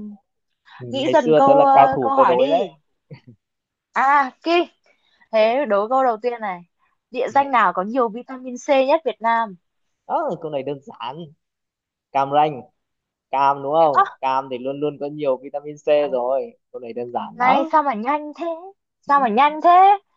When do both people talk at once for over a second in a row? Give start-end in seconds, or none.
0.9-2.7